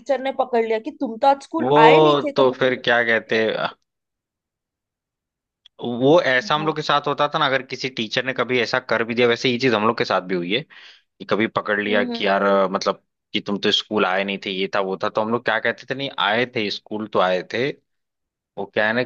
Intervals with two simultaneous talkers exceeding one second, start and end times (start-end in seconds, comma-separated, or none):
1.6-3.4